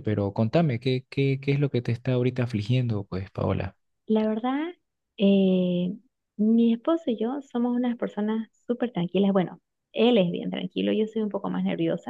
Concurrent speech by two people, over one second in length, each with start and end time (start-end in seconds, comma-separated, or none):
none